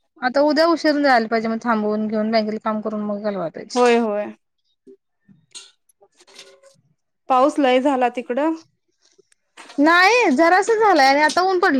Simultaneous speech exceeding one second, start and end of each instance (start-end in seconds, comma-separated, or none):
none